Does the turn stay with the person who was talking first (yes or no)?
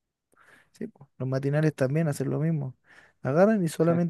yes